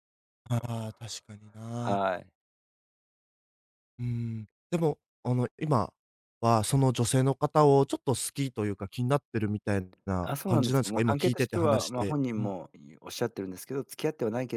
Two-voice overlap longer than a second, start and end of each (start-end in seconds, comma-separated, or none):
10.2-12.5